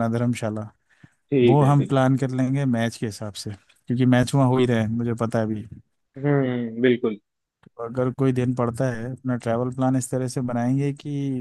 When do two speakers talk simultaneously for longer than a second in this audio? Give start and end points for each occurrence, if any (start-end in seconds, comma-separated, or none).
none